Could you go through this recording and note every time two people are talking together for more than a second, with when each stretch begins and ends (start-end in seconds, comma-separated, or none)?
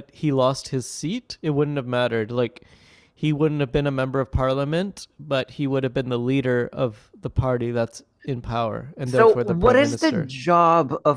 9.1-10.3